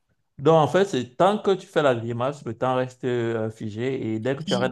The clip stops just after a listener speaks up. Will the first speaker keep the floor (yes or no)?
yes